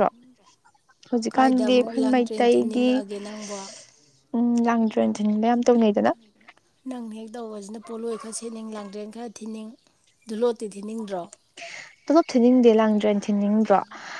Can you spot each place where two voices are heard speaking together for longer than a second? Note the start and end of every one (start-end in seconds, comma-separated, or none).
1.3-2.9